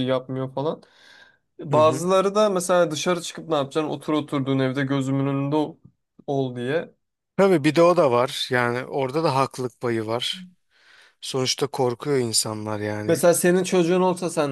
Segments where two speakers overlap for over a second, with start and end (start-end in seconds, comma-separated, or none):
none